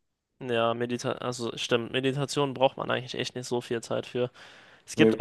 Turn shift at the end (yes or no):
no